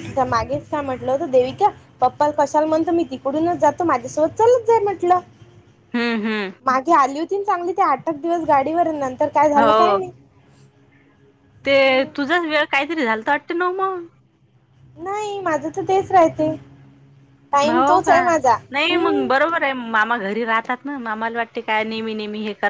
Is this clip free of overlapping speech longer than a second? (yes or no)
yes